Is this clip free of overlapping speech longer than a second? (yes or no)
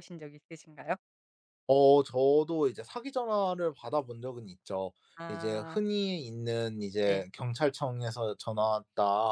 yes